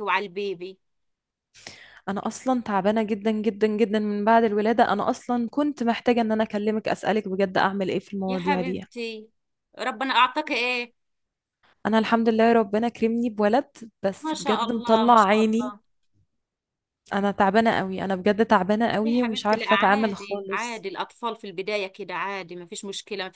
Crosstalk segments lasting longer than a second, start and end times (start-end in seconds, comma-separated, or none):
14.2-15.7, 19.0-20.9